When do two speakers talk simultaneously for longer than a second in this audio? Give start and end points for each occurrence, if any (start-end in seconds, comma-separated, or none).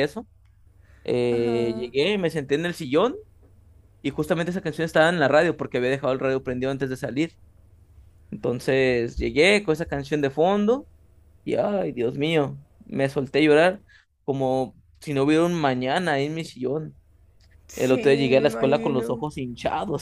17.8-19.2